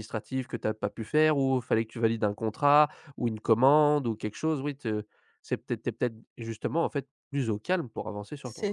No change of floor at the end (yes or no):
no